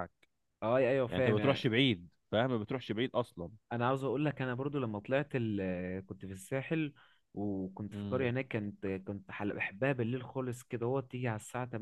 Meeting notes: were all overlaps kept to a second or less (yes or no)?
yes